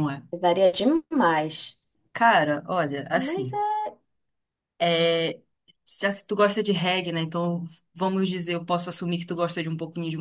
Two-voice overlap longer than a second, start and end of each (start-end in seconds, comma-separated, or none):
none